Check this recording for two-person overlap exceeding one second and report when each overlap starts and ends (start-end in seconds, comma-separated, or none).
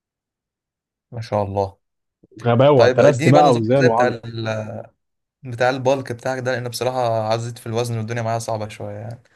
2.7-4.1